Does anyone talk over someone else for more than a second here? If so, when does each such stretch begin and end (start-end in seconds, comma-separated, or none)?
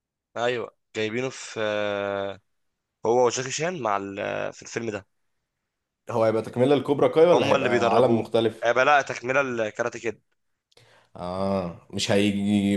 7.3-8.7